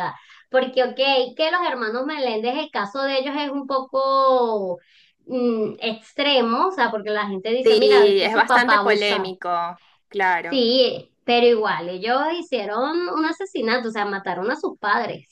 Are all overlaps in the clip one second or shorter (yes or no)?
no